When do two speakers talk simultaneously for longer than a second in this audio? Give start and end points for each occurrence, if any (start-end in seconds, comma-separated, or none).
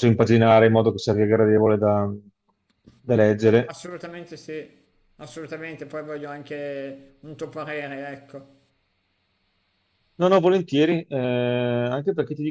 none